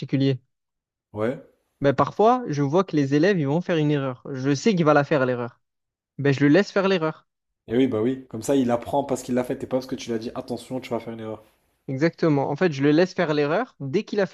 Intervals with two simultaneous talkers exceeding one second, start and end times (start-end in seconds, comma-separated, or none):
none